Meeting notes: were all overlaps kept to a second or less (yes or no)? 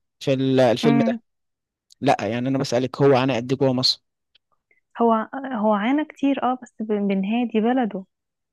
yes